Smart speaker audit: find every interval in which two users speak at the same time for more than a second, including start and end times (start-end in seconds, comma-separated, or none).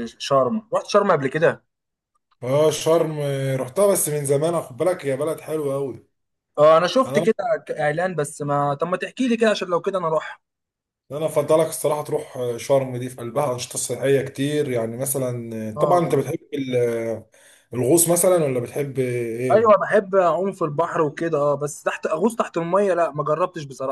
none